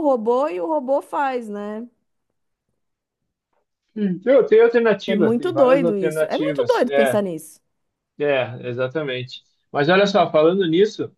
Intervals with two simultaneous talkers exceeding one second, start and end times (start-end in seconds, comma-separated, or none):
5.1-7.2